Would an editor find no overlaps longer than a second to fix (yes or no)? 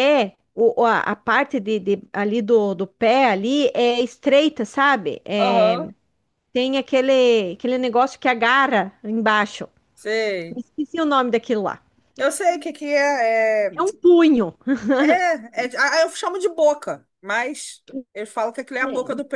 yes